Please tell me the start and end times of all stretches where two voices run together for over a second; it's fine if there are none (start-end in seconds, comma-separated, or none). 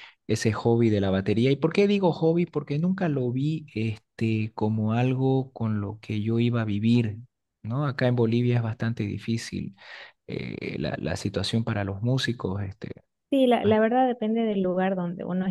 none